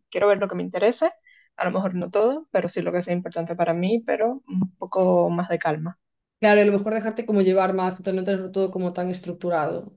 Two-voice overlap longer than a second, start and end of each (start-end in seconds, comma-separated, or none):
none